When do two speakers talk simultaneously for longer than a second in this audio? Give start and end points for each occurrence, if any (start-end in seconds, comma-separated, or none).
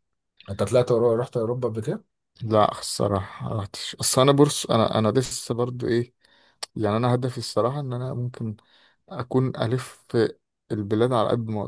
none